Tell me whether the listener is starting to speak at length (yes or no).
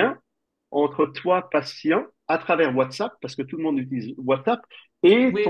yes